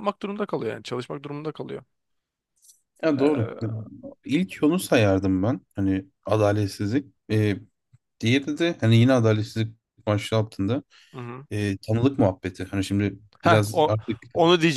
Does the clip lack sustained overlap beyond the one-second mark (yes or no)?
yes